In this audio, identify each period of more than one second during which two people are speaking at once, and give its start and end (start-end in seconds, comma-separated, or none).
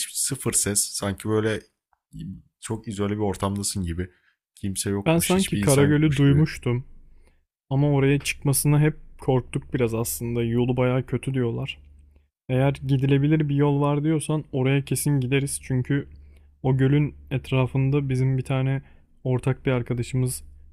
5.0-6.5